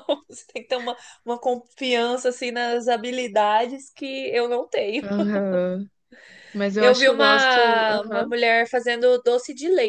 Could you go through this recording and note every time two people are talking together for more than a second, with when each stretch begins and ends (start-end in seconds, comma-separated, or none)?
6.8-8.3